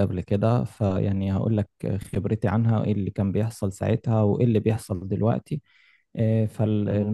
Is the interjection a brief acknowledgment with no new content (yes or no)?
no